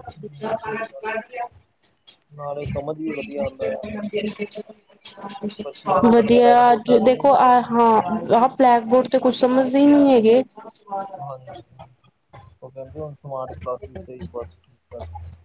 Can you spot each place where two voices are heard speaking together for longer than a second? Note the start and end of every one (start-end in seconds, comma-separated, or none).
6.1-7.7